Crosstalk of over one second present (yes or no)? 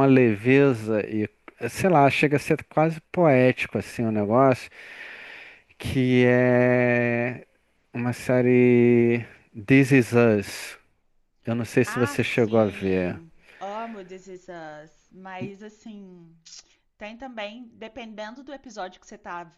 yes